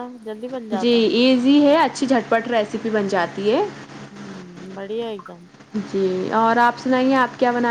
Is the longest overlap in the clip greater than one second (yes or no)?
no